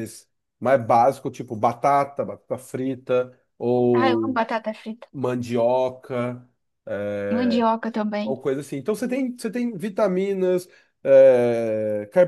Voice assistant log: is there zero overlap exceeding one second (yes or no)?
yes